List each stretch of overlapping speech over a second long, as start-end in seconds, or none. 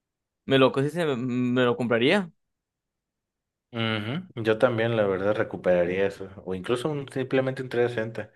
none